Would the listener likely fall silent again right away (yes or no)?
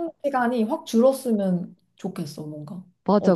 no